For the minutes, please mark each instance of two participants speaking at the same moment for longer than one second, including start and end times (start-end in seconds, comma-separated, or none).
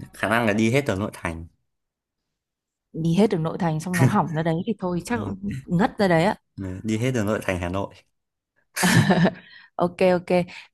none